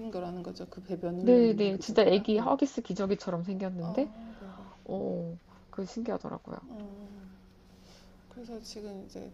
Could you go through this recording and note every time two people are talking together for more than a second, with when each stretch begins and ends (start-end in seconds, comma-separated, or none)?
1.2-2.5